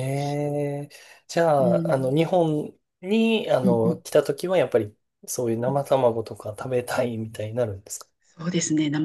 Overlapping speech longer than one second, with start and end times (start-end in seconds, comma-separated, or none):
none